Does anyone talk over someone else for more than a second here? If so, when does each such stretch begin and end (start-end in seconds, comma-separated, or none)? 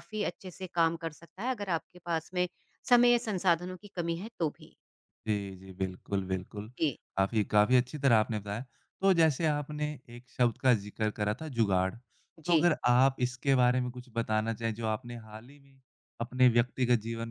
none